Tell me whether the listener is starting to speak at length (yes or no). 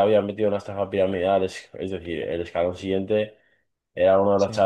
no